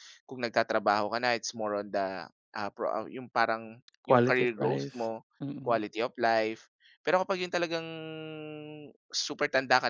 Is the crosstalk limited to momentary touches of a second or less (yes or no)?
no